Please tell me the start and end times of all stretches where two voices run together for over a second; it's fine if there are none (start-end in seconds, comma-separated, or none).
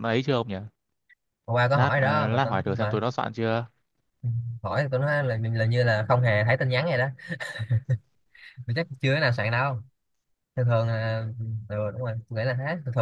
1.7-3.0